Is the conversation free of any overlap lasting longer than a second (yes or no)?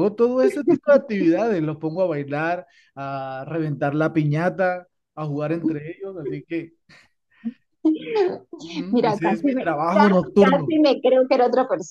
no